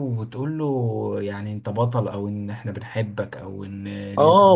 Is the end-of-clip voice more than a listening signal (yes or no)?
yes